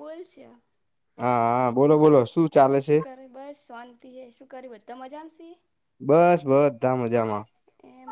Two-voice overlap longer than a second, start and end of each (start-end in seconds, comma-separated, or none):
none